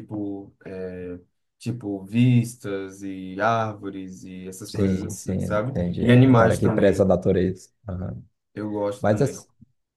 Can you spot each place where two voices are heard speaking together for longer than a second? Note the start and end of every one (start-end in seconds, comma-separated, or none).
4.7-7.0